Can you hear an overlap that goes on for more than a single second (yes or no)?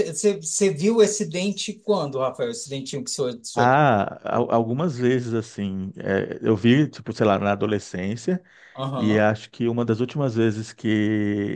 no